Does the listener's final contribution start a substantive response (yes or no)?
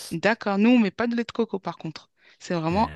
no